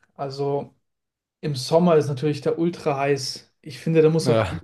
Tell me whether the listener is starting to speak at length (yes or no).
no